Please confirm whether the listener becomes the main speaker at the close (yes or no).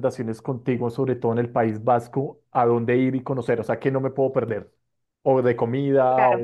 no